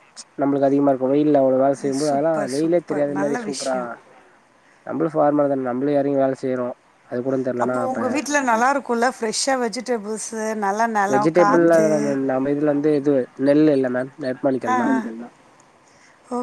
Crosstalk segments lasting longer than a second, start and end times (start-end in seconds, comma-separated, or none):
2.0-3.8